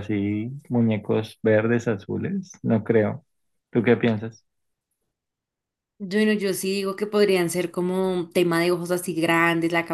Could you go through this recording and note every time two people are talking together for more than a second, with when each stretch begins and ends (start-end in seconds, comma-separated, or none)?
none